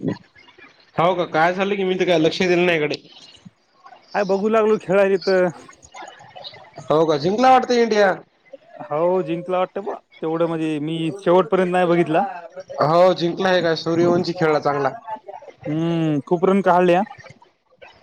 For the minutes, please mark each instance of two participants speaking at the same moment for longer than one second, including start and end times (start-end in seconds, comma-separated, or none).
none